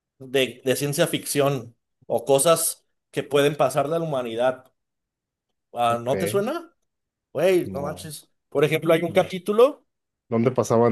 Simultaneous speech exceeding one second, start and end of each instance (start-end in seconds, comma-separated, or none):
none